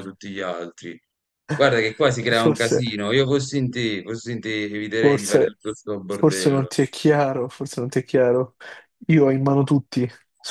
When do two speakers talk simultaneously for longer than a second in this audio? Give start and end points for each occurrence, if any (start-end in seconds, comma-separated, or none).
none